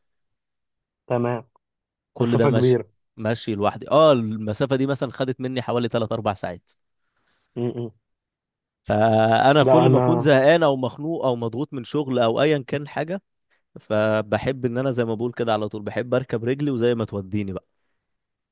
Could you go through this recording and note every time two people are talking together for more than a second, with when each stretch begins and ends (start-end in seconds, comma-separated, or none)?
none